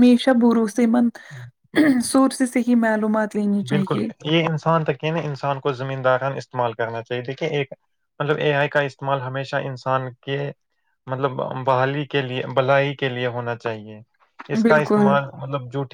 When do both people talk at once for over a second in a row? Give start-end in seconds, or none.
none